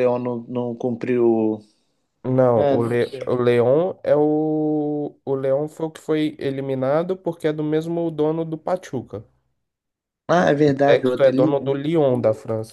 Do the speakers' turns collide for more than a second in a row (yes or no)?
yes